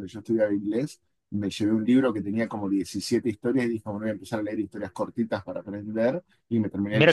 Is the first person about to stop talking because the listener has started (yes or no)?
yes